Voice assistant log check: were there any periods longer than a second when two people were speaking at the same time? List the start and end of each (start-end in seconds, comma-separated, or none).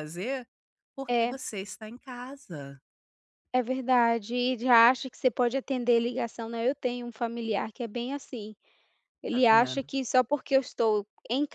none